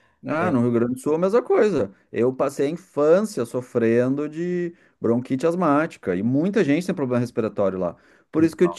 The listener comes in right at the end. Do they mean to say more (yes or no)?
no